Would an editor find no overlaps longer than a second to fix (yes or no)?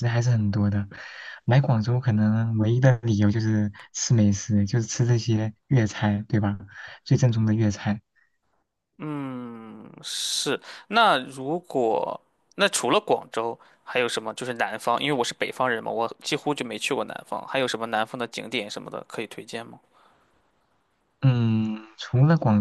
yes